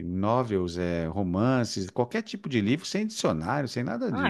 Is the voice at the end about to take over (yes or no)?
yes